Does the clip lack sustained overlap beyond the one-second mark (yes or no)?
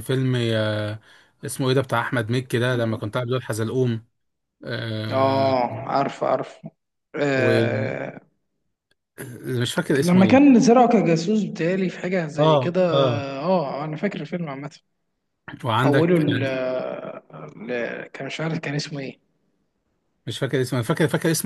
yes